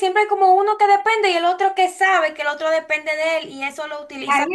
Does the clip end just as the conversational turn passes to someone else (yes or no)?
yes